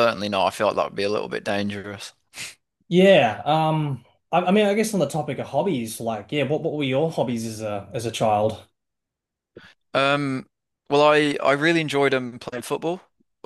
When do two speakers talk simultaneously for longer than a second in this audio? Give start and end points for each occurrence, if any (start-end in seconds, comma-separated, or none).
none